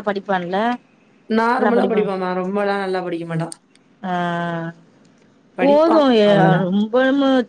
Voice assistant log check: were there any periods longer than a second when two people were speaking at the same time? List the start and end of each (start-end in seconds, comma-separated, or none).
none